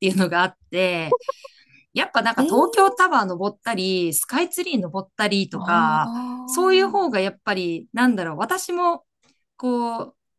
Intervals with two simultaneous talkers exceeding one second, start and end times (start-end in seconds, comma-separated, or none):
5.5-7.1